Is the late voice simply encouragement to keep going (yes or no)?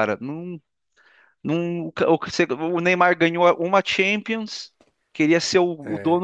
yes